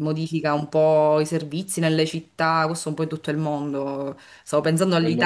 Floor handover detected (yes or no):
no